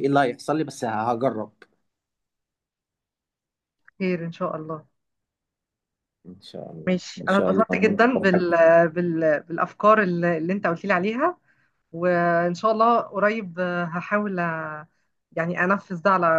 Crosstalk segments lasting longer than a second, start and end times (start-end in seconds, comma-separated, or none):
6.9-8.5